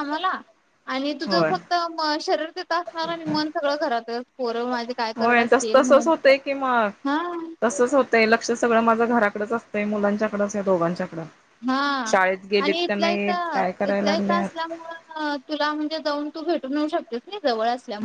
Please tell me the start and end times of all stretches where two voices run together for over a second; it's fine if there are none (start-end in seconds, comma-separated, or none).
12.6-14.7